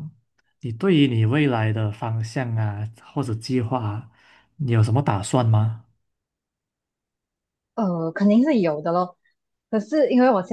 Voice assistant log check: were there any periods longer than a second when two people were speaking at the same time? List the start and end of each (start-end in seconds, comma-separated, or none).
none